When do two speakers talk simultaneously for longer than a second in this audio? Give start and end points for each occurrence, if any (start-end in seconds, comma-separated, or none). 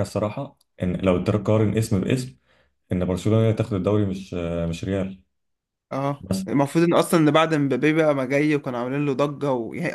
none